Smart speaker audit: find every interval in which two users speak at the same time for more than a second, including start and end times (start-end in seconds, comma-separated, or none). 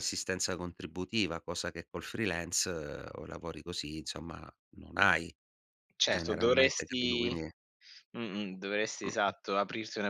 6.0-7.3